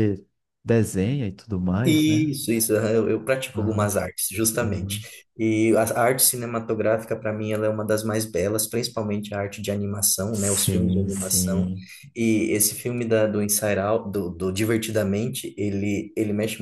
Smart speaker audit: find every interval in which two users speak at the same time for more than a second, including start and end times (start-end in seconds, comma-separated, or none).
10.3-11.7